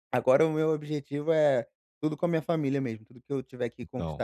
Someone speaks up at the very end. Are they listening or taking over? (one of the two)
listening